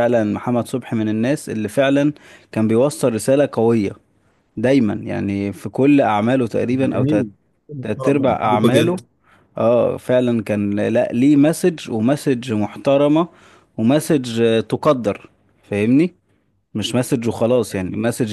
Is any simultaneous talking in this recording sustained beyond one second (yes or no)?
yes